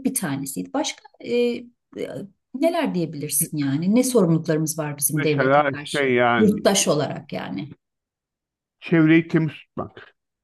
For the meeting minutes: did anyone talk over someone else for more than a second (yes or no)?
yes